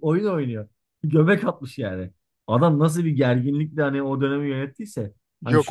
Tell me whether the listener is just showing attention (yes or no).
no